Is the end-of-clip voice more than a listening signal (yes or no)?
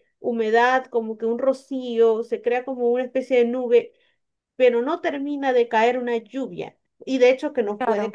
no